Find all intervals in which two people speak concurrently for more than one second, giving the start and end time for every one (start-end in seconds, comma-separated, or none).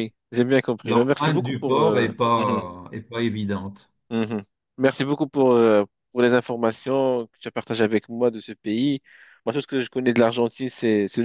0.8-2.6